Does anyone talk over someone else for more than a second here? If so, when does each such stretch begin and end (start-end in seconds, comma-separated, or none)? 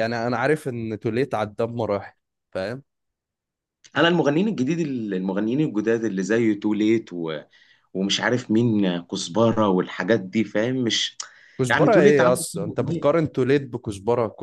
11.7-13.2